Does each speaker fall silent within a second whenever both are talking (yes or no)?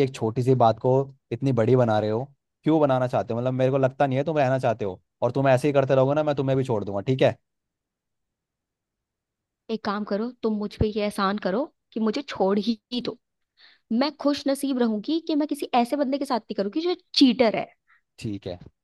yes